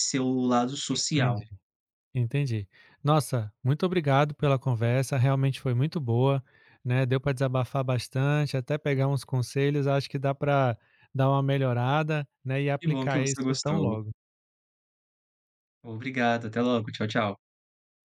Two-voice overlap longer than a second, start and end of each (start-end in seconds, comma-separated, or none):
12.8-14.0